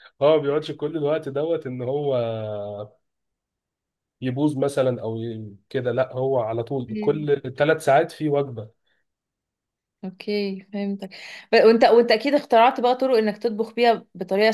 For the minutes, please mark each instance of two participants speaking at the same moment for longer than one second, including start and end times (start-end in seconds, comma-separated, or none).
none